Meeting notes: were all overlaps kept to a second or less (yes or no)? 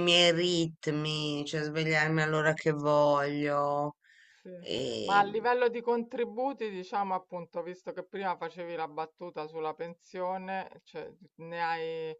yes